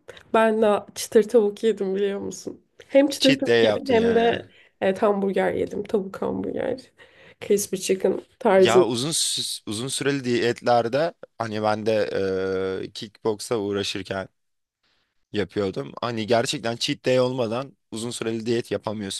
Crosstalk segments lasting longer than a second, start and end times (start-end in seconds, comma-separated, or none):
3.2-4.5